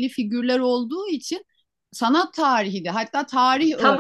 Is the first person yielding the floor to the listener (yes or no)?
yes